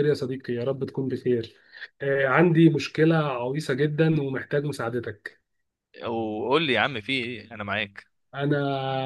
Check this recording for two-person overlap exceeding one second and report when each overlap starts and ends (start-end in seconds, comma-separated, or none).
none